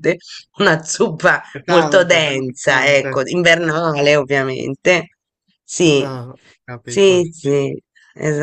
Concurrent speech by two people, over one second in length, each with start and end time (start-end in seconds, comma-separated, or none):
1.5-3.2